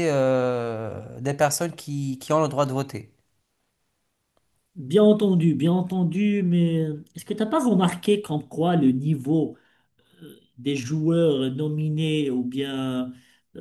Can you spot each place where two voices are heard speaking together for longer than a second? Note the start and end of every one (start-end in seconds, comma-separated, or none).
none